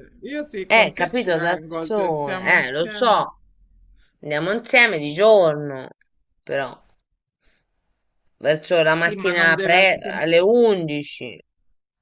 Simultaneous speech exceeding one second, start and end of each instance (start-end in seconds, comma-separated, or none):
0.7-3.2, 9.0-10.2